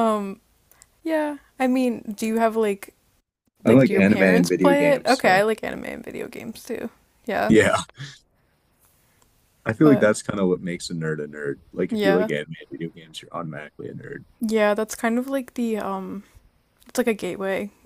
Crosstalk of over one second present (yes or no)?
yes